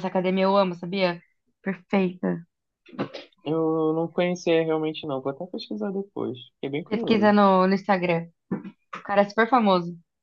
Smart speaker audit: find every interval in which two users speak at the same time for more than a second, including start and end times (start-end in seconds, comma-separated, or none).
none